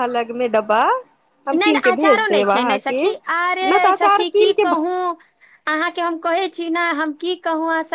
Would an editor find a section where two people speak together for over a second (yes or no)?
yes